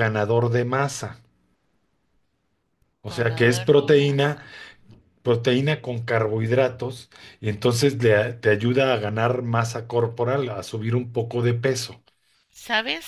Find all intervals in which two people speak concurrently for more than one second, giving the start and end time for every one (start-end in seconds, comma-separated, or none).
3.1-4.4